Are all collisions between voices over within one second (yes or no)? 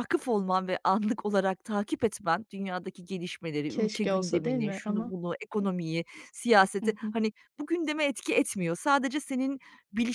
no